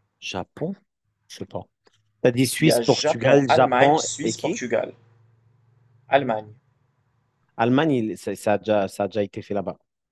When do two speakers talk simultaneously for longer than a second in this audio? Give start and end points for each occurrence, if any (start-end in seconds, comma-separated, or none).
2.6-4.6